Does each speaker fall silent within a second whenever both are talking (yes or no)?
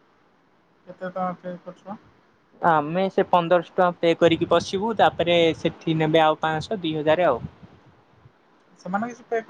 yes